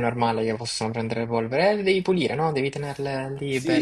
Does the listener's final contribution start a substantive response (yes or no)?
yes